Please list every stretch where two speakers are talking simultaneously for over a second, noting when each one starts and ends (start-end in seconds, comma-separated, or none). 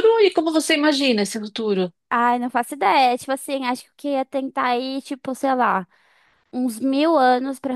none